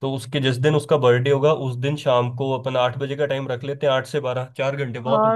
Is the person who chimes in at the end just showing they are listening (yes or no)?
no